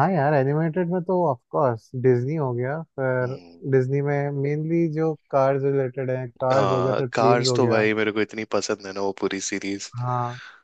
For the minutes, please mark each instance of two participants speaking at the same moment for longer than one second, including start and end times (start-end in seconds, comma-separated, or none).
6.5-7.8